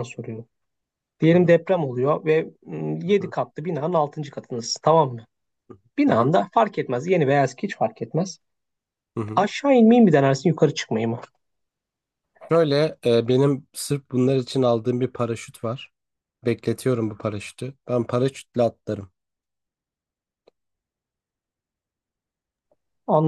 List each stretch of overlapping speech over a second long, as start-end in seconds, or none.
none